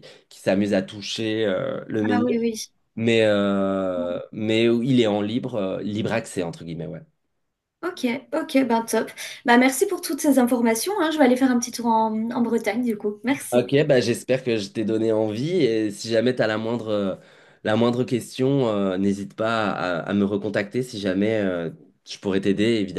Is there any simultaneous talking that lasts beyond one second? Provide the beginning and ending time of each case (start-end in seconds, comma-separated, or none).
none